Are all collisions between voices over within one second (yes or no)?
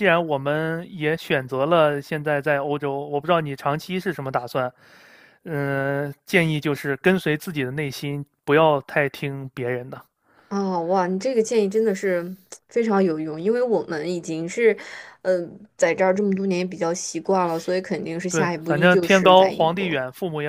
no